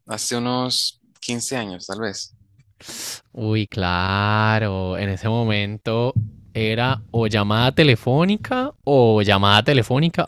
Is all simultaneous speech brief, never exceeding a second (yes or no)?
yes